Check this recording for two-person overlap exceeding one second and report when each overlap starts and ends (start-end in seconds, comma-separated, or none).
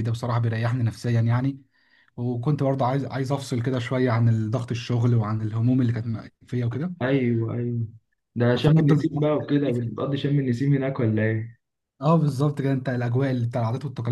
8.5-9.9